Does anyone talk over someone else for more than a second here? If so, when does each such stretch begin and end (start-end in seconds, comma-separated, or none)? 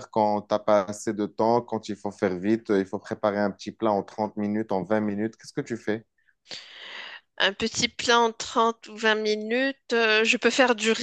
none